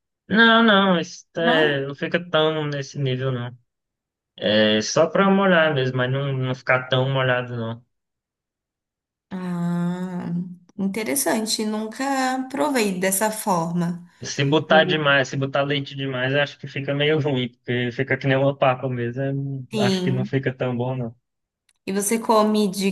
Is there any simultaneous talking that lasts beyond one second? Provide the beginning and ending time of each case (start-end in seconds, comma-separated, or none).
none